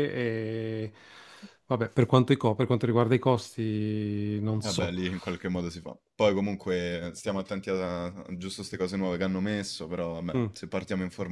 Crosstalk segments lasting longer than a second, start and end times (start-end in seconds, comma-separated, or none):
none